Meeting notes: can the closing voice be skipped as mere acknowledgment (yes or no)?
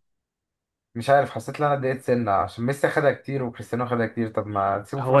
no